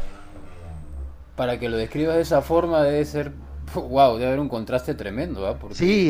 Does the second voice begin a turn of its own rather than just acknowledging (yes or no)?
no